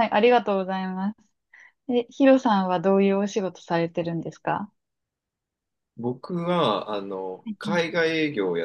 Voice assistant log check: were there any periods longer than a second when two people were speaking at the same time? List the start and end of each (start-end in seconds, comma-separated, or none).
none